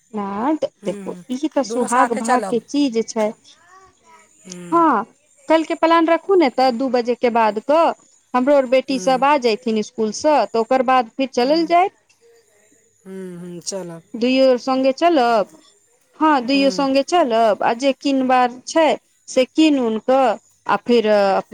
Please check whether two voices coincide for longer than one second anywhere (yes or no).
yes